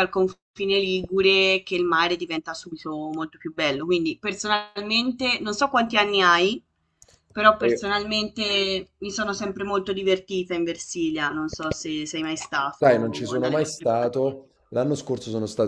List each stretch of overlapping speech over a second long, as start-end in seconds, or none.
12.8-14.3